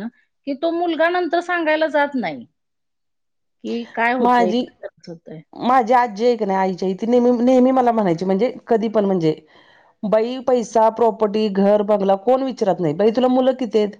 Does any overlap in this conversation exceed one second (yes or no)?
no